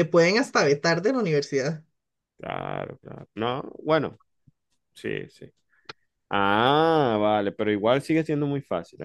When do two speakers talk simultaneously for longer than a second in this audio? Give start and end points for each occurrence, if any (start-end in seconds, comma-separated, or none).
none